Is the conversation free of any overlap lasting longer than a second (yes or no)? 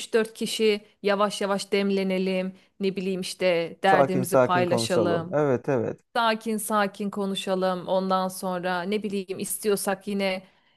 no